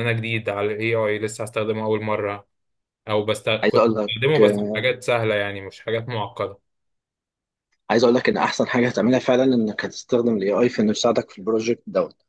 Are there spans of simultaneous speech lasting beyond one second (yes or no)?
no